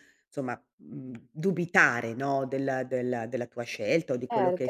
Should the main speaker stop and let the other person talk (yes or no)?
yes